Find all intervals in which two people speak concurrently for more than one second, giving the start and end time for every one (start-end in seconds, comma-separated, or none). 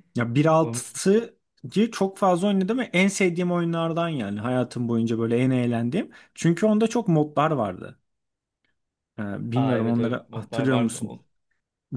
9.5-11.2